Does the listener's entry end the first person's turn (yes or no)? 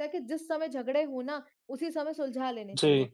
no